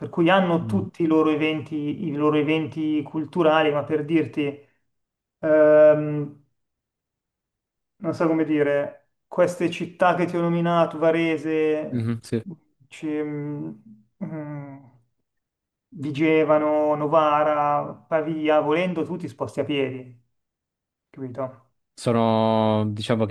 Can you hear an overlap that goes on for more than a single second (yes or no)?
no